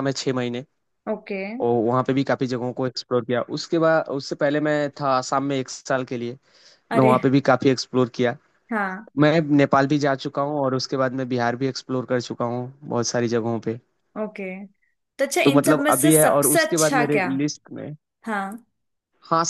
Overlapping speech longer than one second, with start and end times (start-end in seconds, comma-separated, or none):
15.4-17.3